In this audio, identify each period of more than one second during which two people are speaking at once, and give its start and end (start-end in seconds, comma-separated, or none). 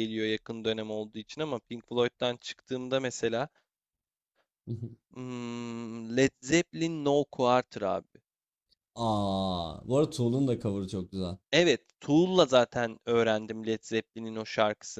none